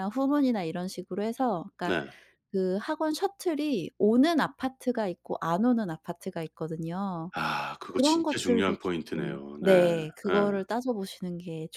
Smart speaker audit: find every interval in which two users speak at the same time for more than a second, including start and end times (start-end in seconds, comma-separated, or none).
7.9-9.7